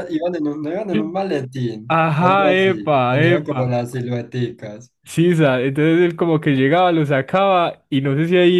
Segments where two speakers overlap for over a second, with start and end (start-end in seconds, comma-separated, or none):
2.0-3.6